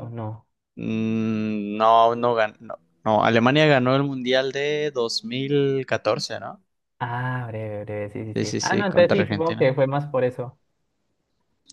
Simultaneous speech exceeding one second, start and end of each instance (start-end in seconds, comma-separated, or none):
8.3-9.7